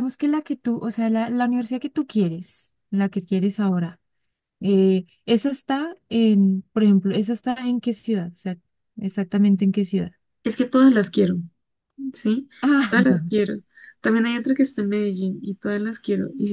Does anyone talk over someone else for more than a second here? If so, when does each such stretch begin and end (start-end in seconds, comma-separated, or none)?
none